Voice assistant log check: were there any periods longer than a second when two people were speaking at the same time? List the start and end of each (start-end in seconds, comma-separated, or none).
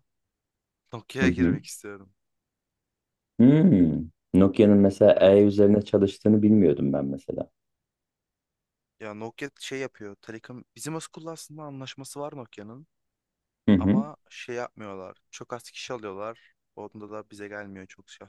none